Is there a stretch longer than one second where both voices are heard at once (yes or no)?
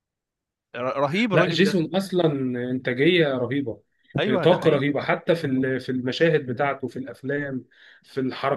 no